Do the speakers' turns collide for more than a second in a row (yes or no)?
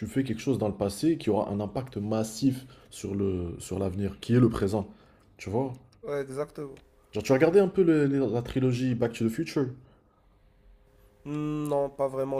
no